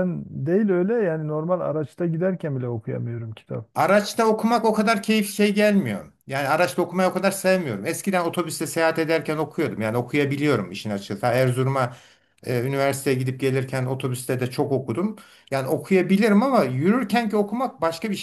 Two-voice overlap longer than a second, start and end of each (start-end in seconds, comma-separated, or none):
none